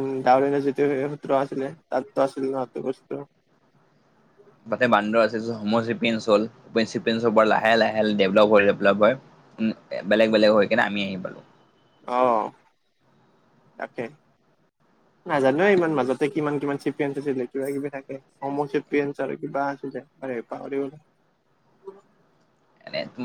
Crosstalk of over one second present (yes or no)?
no